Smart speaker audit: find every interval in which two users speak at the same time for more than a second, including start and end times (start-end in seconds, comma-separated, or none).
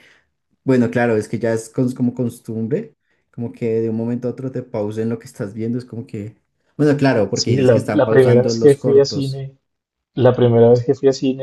7.3-9.4